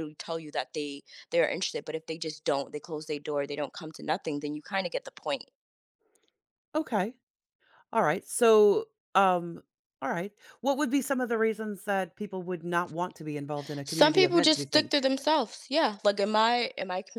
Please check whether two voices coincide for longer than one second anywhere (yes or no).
yes